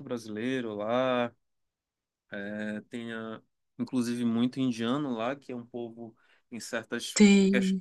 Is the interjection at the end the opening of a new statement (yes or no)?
no